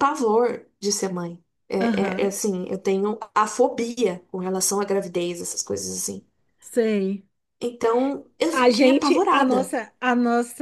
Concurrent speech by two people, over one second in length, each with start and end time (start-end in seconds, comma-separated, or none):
8.5-9.7